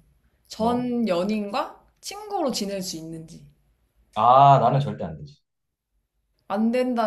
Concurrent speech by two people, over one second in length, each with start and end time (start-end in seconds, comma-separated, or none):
none